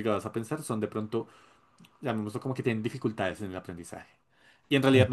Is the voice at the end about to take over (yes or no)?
no